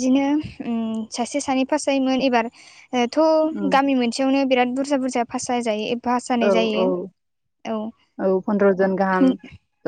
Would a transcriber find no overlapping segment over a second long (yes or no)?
yes